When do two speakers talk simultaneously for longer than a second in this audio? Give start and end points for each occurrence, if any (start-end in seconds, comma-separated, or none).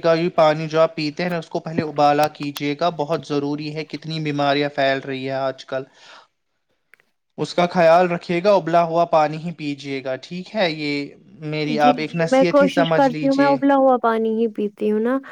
11.8-13.6